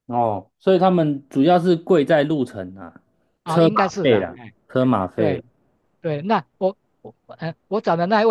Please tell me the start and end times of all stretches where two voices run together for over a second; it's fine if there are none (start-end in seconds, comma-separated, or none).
3.5-5.4